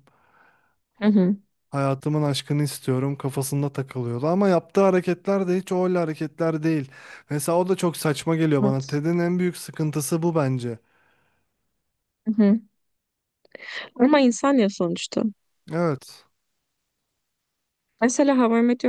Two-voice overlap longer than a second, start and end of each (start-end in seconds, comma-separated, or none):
none